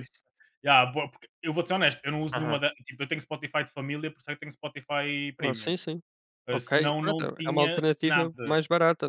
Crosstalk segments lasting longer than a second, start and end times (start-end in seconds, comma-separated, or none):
6.5-8.6